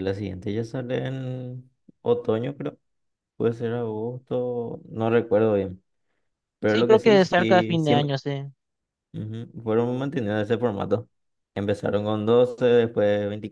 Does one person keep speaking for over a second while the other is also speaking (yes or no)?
yes